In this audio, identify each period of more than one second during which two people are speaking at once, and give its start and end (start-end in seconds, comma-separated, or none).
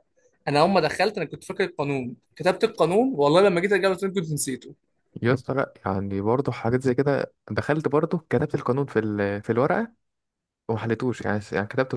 none